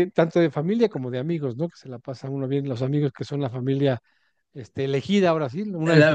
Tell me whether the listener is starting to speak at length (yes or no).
yes